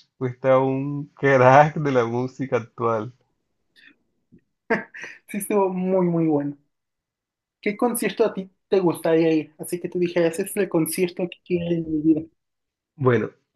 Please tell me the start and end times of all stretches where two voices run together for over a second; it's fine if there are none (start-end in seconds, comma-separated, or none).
none